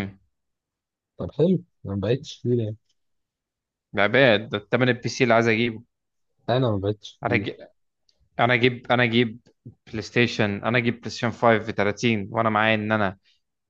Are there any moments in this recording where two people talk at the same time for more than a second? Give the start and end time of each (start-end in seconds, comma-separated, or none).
none